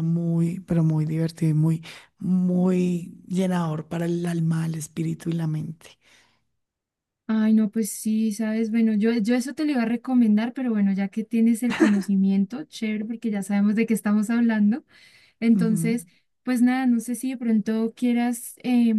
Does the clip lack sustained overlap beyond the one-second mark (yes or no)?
yes